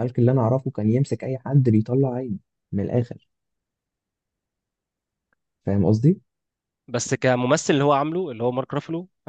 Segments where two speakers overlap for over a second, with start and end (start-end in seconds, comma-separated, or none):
none